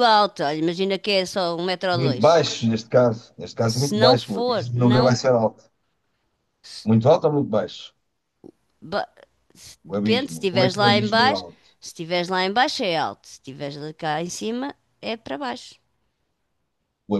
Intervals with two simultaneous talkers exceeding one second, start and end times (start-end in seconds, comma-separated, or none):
3.7-5.2, 9.9-11.4